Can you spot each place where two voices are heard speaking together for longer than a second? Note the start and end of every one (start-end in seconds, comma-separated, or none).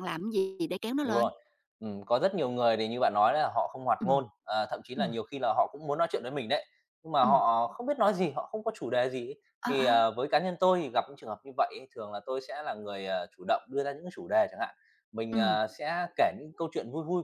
none